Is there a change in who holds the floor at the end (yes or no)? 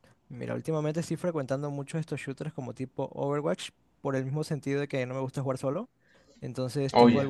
no